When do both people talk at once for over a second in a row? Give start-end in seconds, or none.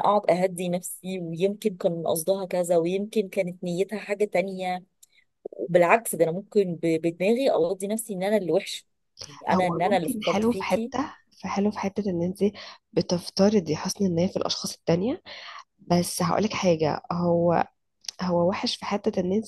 9.5-10.9